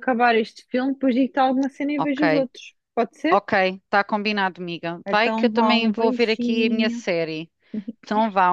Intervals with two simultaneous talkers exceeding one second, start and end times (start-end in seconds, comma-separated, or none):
5.0-7.0